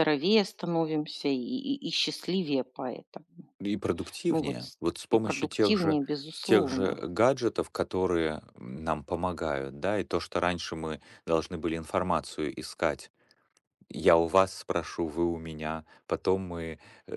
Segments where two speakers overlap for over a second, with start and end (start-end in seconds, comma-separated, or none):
4.3-7.0